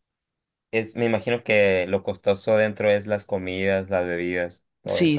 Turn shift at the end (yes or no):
yes